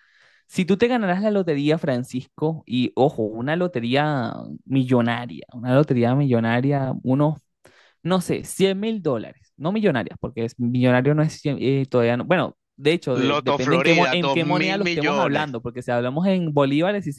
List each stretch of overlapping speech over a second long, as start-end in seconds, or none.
13.1-15.6